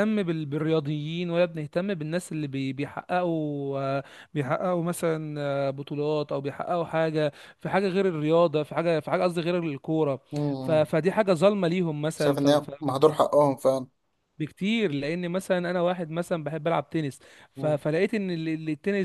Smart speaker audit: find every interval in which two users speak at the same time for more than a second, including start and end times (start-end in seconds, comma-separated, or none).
none